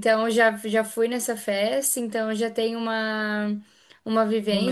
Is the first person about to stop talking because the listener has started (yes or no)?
no